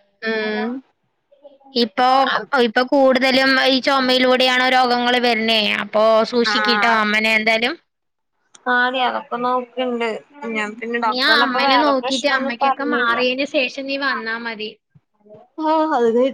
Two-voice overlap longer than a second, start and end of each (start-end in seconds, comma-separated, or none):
11.1-13.1